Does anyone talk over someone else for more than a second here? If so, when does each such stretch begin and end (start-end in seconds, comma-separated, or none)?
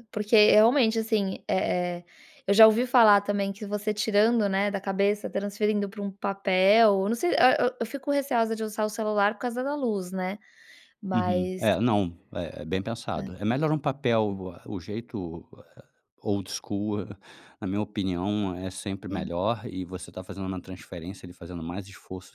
none